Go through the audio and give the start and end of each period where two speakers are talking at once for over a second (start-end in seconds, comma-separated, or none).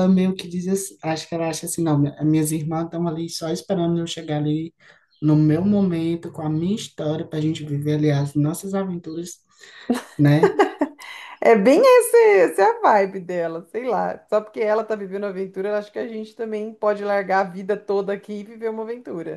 none